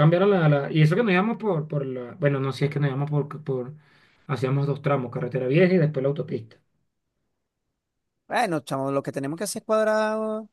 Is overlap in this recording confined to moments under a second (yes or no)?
yes